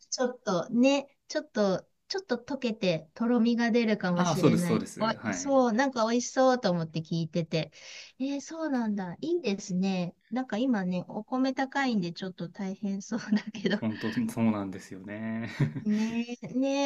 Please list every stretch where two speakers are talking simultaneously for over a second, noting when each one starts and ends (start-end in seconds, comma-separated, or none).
4.2-5.6